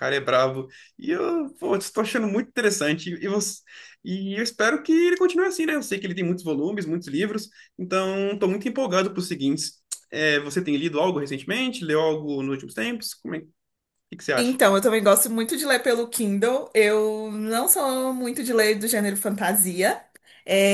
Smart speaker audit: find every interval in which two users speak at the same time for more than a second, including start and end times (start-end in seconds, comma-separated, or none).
none